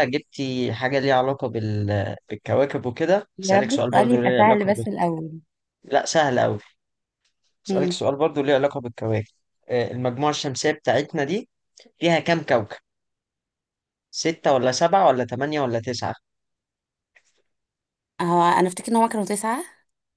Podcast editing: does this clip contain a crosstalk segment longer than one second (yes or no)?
yes